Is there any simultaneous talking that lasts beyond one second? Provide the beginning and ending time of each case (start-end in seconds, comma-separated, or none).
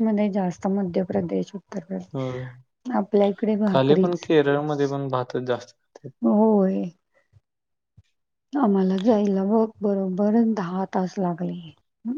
none